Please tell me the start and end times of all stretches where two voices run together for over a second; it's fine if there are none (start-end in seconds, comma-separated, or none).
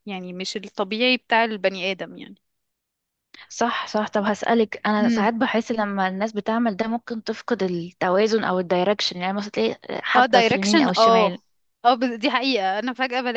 10.1-11.3